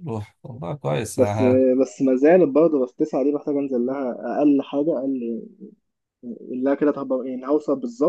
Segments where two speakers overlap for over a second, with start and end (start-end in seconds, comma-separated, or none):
none